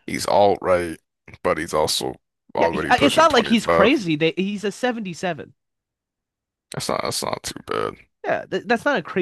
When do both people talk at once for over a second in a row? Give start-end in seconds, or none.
2.5-4.0